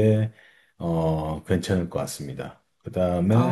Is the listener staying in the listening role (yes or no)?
yes